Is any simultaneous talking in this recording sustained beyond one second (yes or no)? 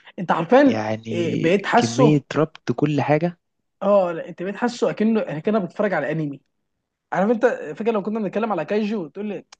yes